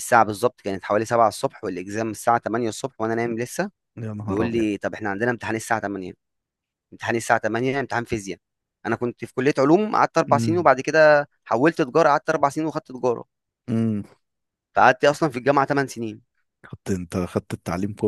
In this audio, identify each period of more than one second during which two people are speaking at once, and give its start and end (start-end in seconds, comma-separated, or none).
none